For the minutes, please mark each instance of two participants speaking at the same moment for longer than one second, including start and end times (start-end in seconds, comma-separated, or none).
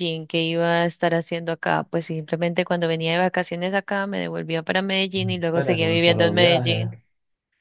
5.1-6.9